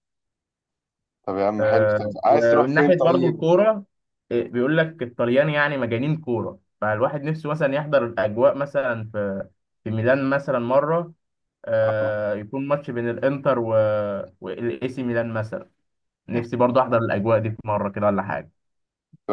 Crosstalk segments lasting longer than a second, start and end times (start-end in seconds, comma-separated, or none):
1.6-3.5